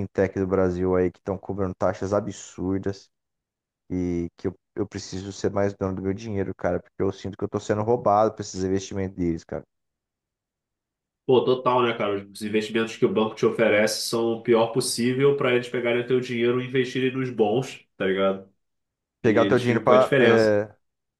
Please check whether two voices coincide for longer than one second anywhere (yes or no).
yes